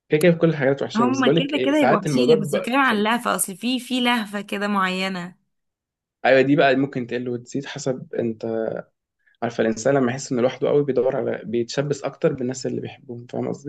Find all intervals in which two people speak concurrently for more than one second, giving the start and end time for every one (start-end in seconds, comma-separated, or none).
0.9-3.0